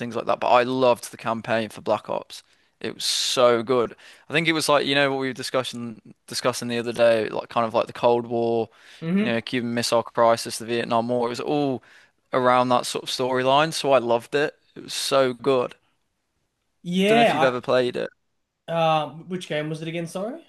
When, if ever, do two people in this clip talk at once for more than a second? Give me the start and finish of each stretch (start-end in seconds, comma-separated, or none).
none